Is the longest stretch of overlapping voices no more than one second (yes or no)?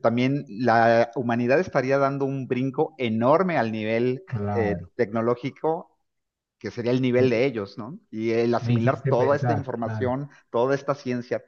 no